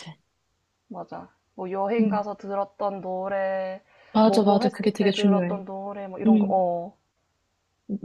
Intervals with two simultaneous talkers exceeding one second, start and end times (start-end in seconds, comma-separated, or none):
4.2-5.6